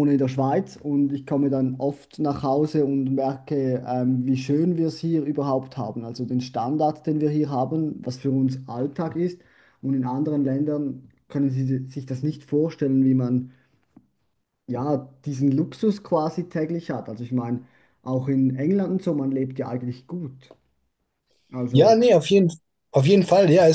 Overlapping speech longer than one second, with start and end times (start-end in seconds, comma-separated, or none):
none